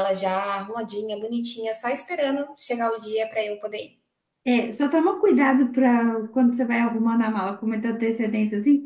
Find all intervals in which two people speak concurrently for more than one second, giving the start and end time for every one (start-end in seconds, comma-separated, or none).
none